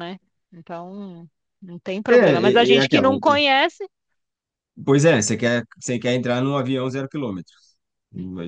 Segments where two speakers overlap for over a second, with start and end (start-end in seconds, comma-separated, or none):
2.1-3.4